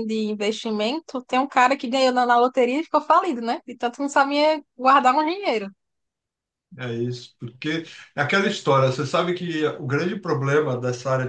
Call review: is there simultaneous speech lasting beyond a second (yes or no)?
no